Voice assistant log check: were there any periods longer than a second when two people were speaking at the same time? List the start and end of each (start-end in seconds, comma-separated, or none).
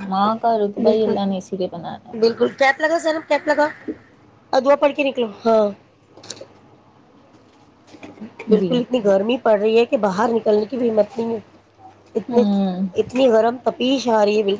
none